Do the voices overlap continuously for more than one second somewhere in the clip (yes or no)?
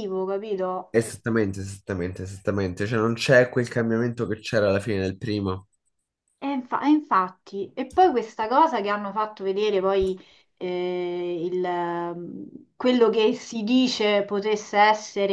no